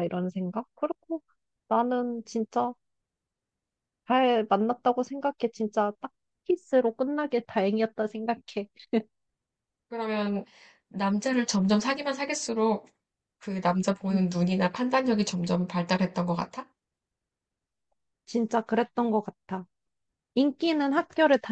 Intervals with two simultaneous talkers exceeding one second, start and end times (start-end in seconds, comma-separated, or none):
none